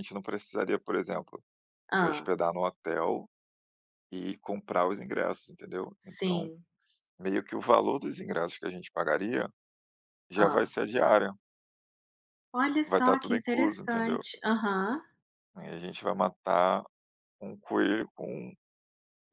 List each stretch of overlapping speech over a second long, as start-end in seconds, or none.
12.8-14.2